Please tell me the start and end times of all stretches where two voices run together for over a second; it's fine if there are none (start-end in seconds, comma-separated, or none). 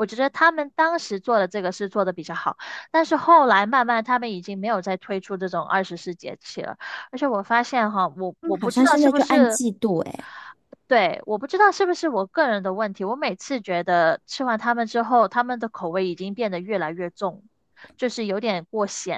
8.4-9.6